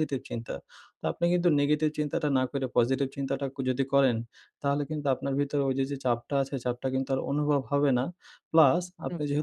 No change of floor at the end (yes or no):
yes